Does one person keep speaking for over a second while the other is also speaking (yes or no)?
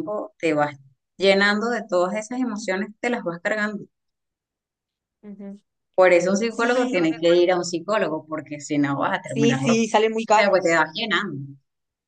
yes